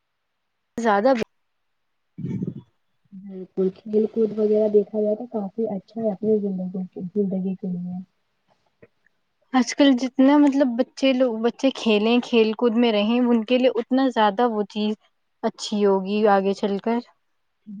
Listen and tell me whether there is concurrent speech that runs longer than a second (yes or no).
no